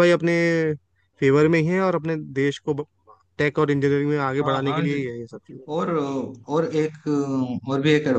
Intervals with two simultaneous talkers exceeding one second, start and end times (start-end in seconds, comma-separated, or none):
none